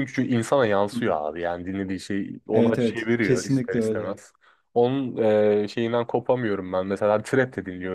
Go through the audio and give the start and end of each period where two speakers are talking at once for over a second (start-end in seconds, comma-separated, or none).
2.5-4.2